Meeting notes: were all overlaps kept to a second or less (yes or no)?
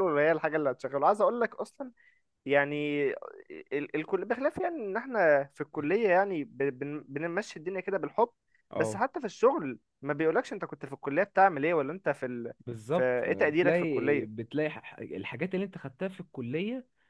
no